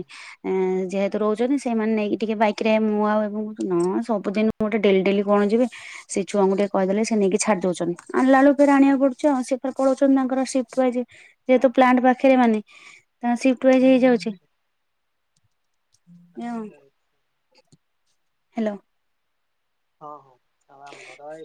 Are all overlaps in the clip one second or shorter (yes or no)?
yes